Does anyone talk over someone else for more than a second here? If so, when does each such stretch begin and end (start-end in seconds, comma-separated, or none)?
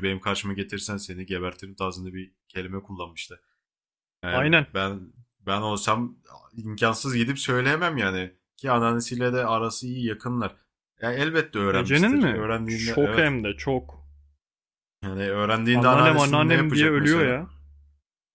11.7-13.3, 15.7-17.4